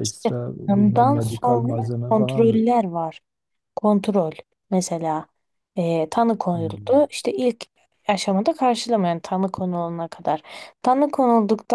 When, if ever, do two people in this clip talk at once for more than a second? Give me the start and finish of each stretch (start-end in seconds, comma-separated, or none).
0.7-2.6